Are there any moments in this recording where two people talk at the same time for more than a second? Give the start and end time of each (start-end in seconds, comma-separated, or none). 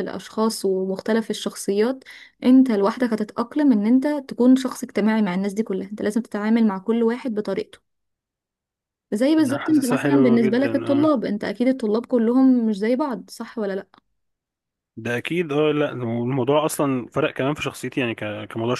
9.4-10.7